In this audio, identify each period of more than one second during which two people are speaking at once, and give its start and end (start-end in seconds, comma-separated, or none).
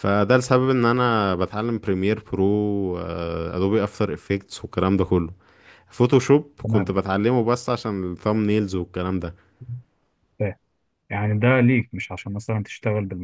none